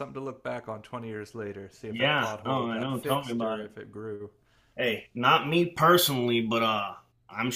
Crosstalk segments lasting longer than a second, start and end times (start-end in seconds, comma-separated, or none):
1.9-3.7